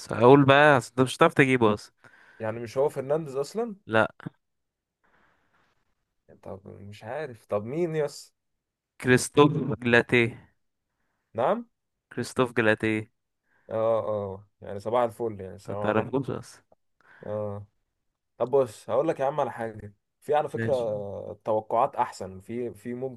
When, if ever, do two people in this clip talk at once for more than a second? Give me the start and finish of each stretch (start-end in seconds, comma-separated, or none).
none